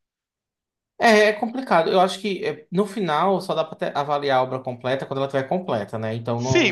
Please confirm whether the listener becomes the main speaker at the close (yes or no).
yes